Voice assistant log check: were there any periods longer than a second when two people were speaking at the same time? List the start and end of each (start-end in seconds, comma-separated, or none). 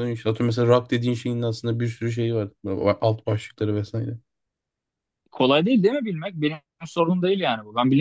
none